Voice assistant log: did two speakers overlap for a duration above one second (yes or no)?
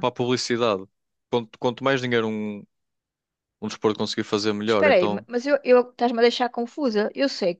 no